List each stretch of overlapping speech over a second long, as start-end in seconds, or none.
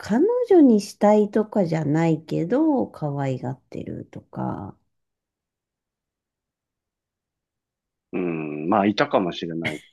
none